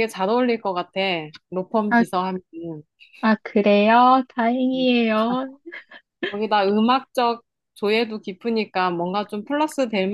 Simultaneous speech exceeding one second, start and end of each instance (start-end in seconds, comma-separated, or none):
none